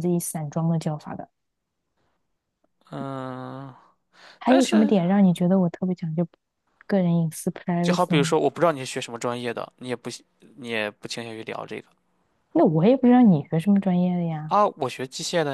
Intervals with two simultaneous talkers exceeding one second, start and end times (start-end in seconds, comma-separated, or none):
none